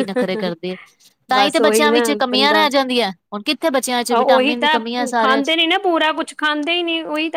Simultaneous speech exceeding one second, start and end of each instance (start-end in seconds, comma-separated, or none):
1.3-2.7